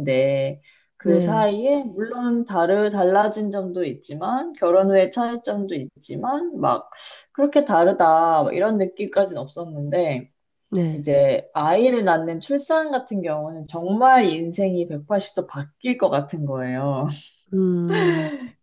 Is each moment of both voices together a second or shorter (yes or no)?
yes